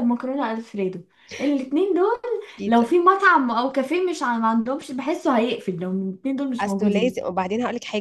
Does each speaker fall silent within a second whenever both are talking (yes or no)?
yes